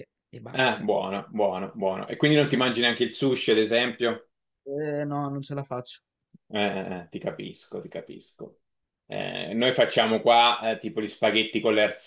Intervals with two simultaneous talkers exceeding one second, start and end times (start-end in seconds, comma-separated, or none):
none